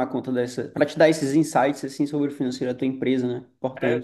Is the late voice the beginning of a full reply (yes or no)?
yes